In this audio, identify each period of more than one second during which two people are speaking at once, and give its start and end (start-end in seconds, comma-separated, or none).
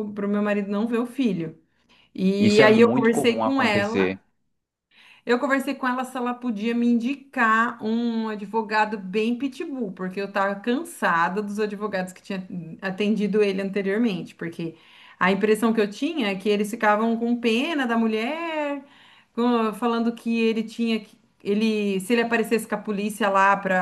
2.4-4.2